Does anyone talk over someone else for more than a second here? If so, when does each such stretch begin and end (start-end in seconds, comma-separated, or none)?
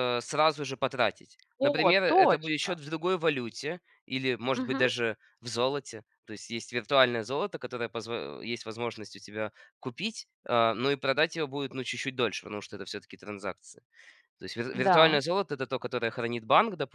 1.6-2.8